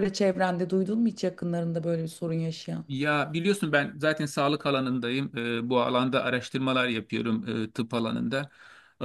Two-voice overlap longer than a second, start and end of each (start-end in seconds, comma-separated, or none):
none